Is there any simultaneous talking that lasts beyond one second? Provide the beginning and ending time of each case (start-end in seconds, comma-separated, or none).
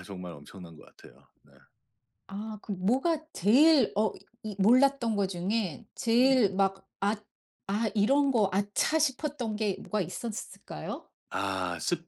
none